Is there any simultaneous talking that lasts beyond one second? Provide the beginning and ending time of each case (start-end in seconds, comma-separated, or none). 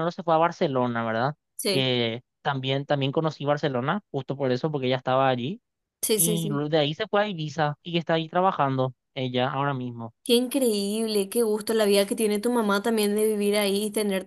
none